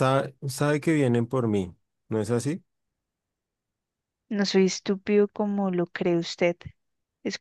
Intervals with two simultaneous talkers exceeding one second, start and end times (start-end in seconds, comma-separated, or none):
none